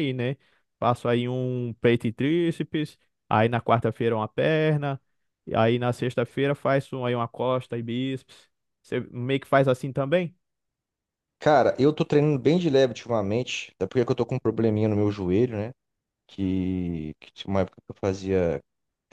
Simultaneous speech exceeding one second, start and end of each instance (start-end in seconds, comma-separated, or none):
none